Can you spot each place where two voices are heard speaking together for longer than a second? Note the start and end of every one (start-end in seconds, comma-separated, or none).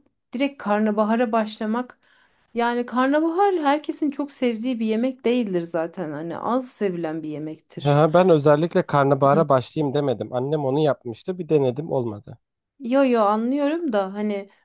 none